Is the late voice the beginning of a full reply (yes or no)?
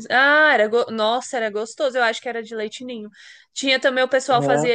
no